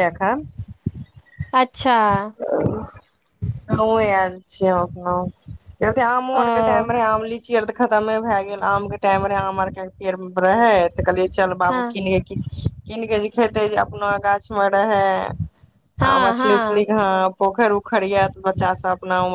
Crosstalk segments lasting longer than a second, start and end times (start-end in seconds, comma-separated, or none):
none